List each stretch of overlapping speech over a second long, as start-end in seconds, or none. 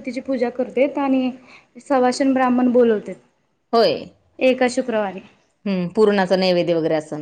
none